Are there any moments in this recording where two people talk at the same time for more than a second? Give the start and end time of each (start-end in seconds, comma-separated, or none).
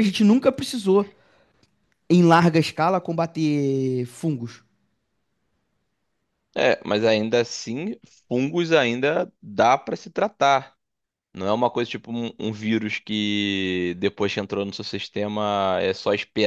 none